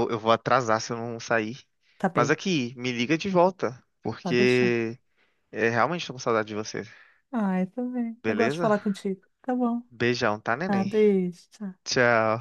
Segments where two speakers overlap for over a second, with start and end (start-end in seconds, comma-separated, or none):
none